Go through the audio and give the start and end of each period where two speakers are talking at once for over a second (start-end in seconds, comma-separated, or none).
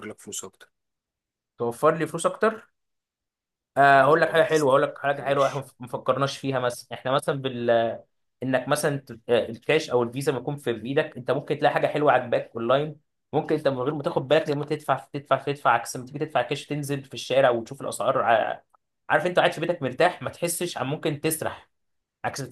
3.9-5.7